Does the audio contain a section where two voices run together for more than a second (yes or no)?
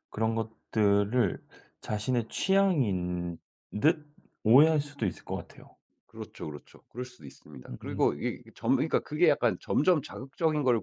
no